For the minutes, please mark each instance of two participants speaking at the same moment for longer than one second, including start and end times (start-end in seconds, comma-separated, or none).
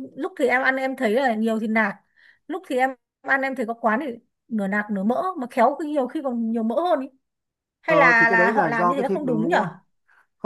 7.9-9.6